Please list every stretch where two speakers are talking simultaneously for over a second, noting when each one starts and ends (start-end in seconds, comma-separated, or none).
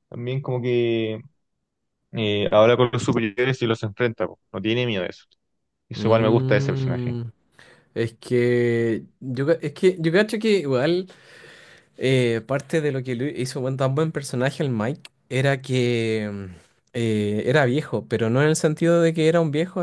5.9-7.2